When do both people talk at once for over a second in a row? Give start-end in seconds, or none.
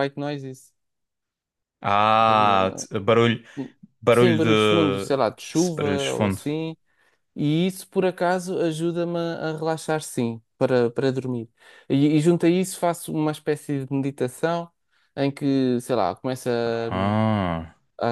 4.1-6.4